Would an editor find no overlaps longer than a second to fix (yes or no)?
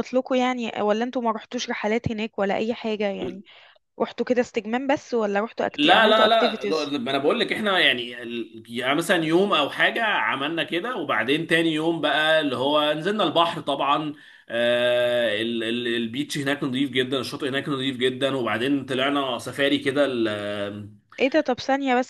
no